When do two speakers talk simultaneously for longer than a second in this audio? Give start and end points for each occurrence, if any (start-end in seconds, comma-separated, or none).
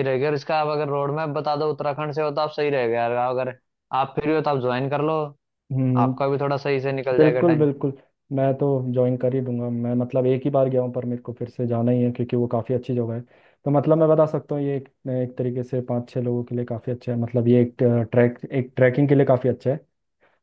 none